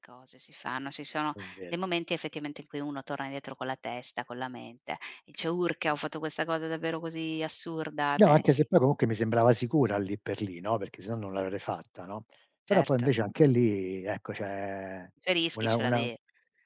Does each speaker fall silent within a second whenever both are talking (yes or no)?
yes